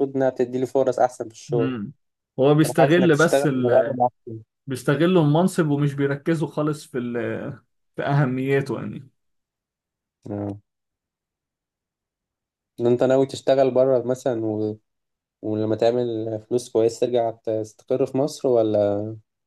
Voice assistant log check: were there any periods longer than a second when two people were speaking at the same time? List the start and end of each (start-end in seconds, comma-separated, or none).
2.6-4.0